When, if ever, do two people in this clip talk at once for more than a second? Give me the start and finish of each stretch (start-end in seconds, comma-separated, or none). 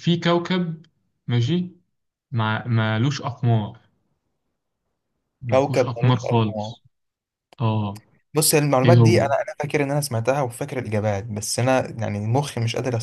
5.5-6.8